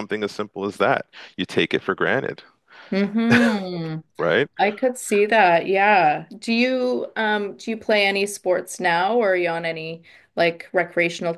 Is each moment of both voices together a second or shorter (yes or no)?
yes